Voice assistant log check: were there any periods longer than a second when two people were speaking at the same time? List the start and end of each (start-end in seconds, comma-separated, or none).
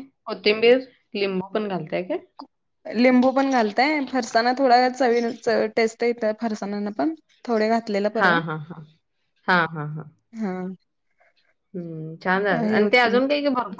none